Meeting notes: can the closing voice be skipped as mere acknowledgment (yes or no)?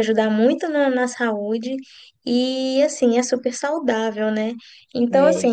yes